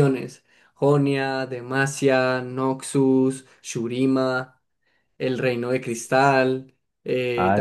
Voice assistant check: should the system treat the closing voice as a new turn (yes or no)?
yes